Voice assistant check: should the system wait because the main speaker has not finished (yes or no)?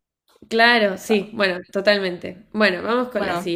no